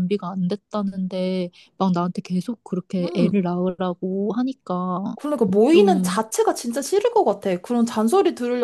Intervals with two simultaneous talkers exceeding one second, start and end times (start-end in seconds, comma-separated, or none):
none